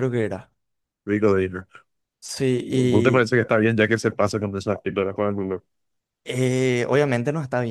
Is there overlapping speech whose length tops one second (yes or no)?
no